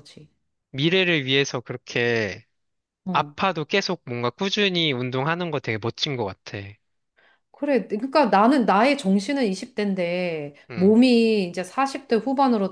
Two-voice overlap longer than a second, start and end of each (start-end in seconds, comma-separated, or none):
none